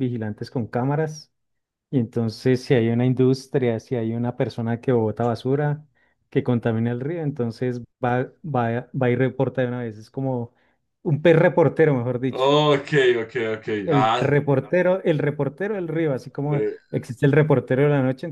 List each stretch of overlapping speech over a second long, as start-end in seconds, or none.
none